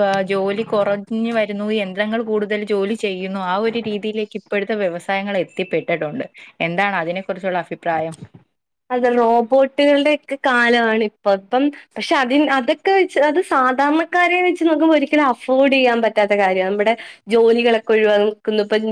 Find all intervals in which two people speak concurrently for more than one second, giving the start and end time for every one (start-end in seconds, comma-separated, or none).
none